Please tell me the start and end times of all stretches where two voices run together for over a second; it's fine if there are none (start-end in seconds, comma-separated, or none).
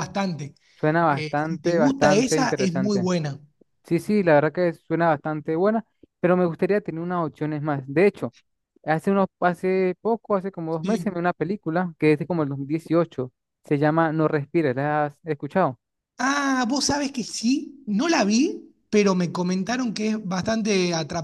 1.1-3.1